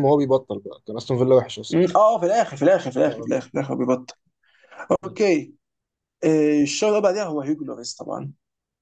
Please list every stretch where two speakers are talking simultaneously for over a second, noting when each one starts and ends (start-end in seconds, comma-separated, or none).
none